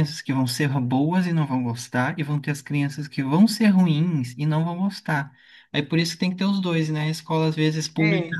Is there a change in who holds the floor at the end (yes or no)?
no